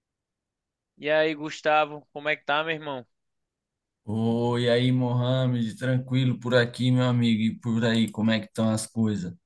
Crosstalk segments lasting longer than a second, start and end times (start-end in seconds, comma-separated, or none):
none